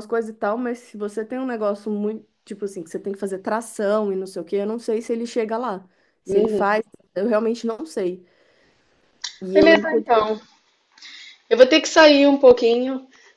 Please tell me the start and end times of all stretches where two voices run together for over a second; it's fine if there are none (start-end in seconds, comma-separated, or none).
none